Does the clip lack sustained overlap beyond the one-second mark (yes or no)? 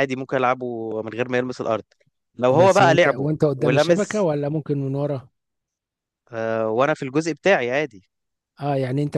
no